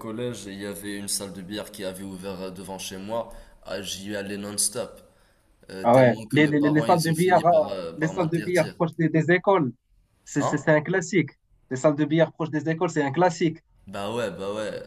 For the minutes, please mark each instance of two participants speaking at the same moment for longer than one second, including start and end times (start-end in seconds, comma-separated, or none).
5.8-8.7